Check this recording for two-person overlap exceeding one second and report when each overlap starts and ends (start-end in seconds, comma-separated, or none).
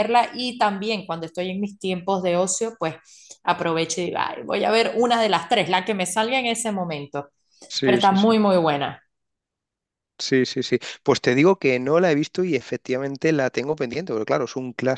none